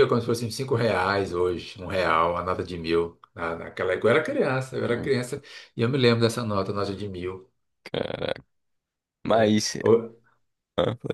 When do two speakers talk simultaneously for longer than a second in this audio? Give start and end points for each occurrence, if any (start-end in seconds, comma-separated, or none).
none